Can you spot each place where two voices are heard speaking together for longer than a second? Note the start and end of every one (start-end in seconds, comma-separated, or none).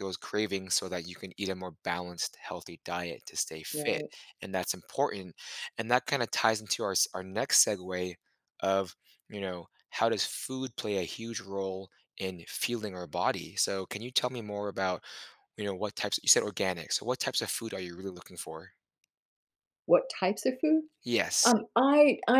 none